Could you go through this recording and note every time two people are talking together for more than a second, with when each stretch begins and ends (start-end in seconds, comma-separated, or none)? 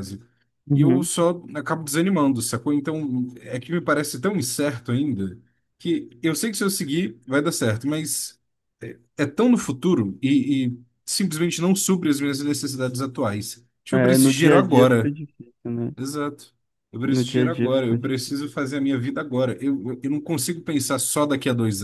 13.9-15.1, 17.1-18.3